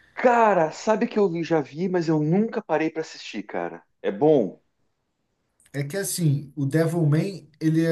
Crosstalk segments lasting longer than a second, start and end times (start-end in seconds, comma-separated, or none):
none